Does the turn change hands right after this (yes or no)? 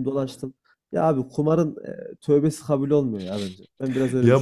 yes